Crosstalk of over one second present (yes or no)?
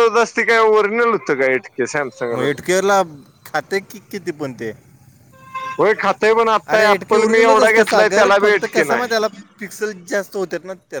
yes